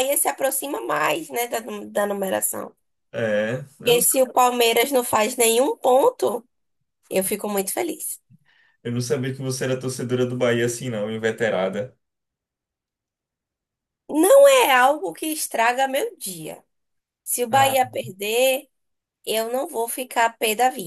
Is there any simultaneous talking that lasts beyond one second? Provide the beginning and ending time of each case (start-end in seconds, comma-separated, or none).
none